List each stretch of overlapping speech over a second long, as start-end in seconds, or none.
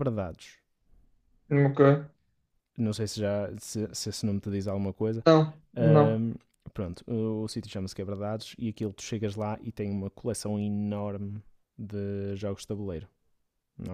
none